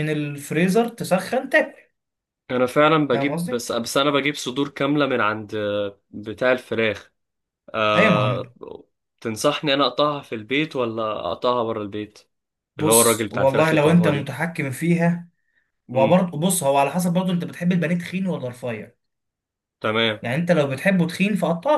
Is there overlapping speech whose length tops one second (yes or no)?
yes